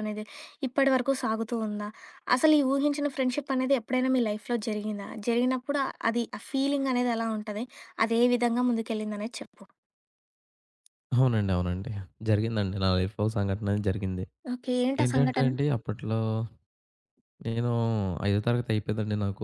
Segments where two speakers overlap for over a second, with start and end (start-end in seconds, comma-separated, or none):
none